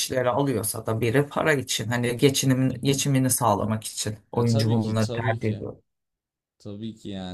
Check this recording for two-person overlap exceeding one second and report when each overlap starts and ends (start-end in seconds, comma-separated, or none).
4.3-5.7